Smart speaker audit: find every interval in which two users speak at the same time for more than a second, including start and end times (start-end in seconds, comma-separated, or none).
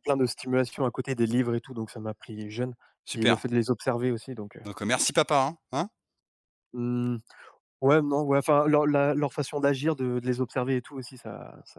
none